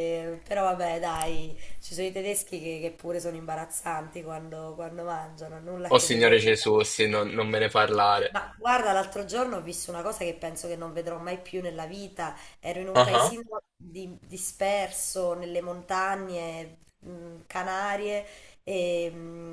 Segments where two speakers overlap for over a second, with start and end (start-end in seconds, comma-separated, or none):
none